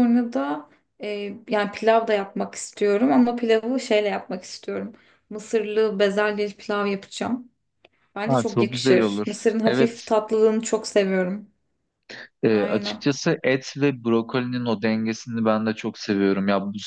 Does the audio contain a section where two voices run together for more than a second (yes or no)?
yes